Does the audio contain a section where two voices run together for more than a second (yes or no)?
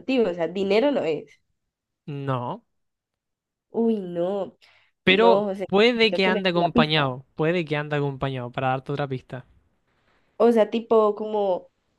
yes